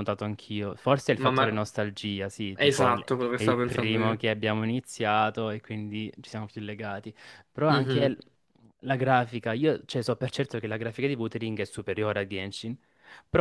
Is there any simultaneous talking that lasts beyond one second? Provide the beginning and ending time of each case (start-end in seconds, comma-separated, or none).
2.5-4.3